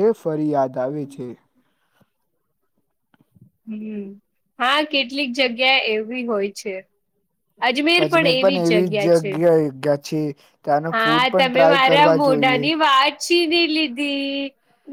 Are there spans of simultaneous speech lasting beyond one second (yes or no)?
yes